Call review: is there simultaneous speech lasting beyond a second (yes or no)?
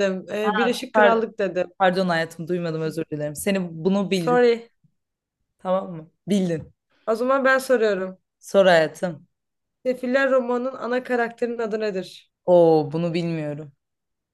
no